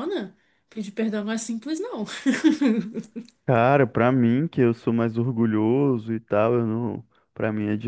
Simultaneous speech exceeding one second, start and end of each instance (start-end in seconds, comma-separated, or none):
none